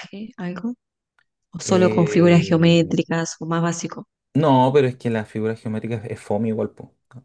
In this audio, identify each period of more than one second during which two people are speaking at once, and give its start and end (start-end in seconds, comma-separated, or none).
1.6-3.0